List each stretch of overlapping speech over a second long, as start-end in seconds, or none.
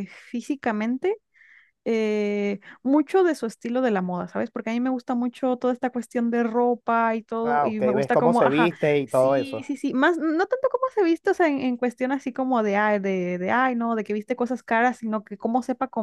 7.4-9.7